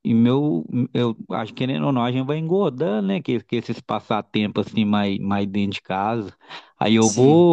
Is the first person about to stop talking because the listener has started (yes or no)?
no